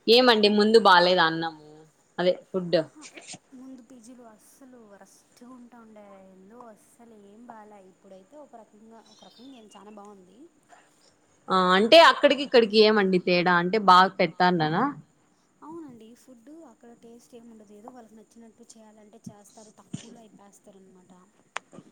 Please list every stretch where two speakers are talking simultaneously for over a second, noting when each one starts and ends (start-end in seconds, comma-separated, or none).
none